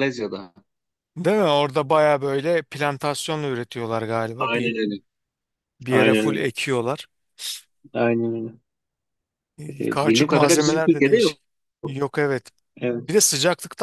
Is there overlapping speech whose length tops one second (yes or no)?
yes